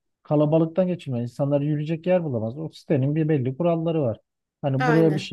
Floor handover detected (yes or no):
no